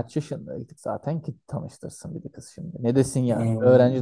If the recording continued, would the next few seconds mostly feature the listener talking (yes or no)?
no